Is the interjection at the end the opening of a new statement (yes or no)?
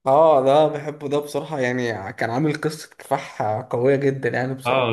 yes